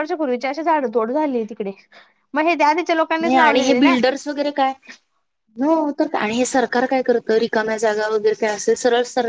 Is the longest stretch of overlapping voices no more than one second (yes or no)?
yes